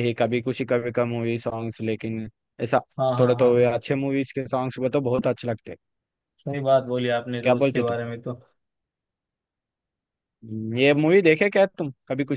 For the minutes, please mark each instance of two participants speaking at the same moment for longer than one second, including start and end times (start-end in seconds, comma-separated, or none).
none